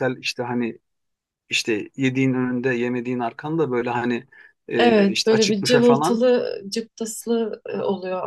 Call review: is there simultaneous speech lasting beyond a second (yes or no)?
yes